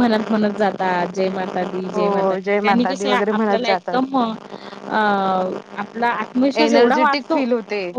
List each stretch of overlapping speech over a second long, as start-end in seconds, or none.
1.9-4.0